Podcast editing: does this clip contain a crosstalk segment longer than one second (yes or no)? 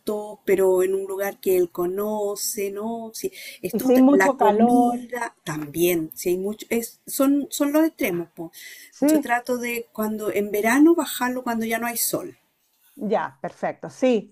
yes